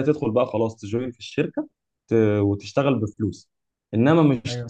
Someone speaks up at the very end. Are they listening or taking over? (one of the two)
listening